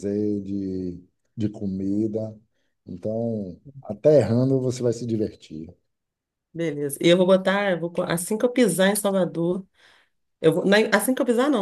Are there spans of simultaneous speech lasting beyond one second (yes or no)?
no